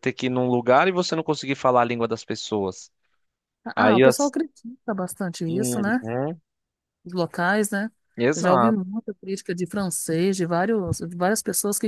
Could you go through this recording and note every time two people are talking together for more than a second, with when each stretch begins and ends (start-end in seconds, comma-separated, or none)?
none